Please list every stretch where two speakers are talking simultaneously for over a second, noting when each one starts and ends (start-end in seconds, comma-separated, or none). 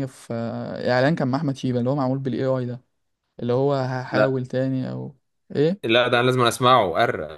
none